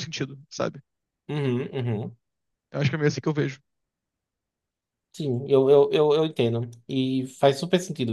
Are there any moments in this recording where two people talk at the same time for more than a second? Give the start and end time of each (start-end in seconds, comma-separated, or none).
none